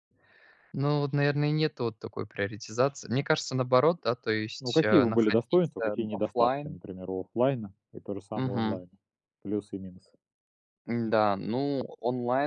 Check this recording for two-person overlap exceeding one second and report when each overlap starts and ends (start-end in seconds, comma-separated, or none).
4.6-6.8